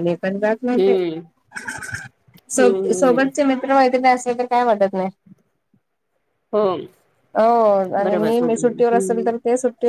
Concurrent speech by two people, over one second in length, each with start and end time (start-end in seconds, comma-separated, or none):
8.0-9.3